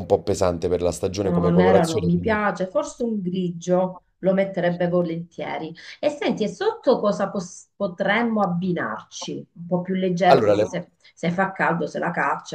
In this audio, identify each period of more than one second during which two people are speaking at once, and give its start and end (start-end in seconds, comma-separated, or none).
1.2-2.4